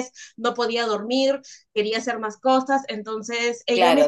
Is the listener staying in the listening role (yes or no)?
no